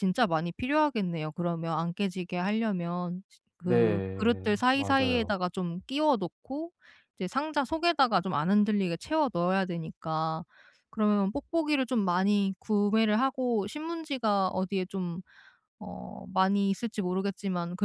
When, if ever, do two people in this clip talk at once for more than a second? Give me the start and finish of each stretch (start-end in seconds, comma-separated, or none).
3.6-5.3